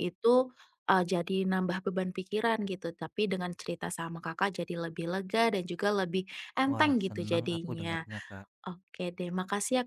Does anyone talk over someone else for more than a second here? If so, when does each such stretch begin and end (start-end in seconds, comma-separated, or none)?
6.7-8.1